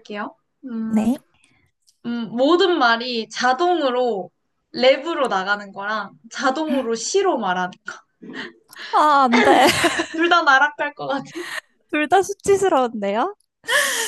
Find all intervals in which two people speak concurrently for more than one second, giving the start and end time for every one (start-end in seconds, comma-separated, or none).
none